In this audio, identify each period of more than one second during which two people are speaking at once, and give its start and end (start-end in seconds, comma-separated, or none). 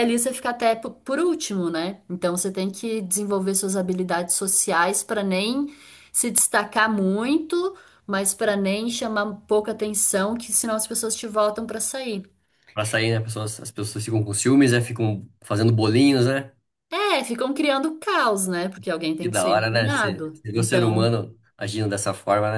19.2-21.1